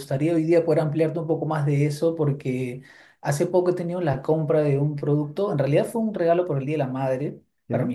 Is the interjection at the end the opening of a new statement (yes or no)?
no